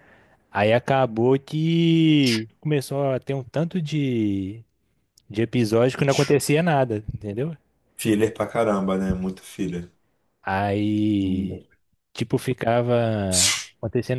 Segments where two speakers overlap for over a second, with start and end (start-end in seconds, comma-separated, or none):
none